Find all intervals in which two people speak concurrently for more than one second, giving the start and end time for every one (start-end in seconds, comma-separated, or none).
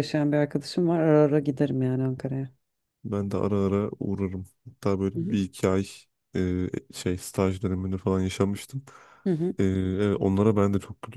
none